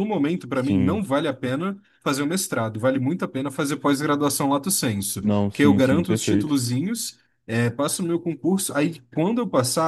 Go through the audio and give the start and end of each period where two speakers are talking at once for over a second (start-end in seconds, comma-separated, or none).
5.2-6.6